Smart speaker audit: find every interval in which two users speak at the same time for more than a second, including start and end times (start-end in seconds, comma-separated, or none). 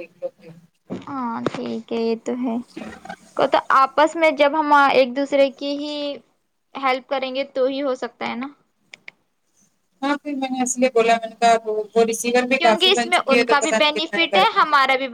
12.6-14.6